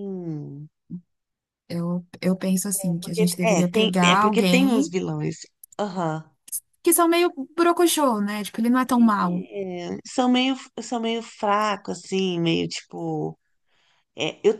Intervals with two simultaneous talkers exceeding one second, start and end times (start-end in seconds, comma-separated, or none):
3.0-4.9